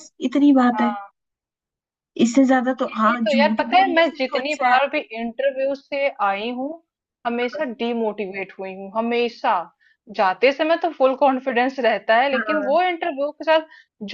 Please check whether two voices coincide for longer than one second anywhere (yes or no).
yes